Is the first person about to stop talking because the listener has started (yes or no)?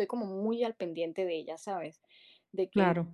no